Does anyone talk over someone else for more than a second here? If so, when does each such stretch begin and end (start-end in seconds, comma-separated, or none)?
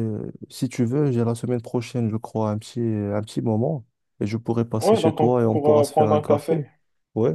4.8-6.6